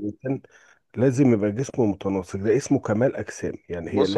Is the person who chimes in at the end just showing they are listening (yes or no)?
no